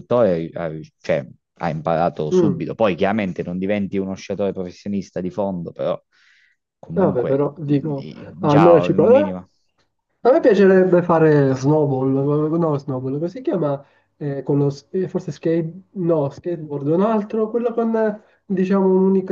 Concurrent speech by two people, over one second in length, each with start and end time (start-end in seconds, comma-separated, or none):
6.9-9.3